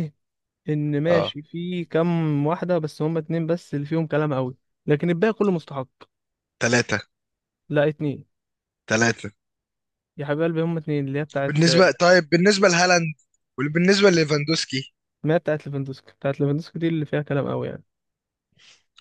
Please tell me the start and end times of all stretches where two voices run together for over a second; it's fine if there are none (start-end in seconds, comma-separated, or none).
none